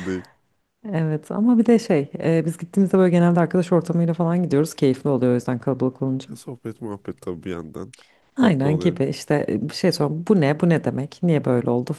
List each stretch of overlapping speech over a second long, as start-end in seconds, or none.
none